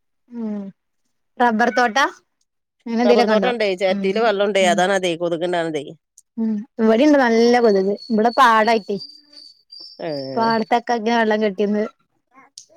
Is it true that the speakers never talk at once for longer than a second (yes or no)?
yes